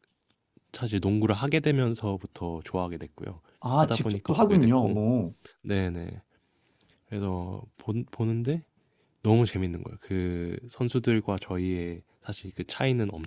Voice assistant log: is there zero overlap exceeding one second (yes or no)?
no